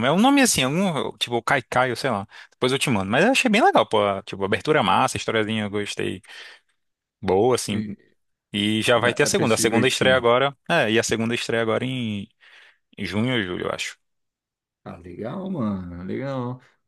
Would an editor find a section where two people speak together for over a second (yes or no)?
yes